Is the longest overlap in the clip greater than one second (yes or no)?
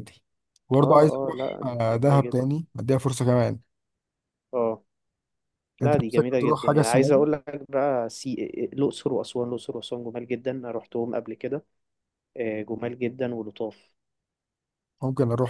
yes